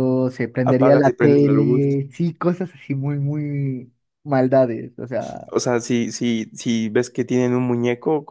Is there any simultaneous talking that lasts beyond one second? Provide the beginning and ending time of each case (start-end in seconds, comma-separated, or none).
0.6-1.9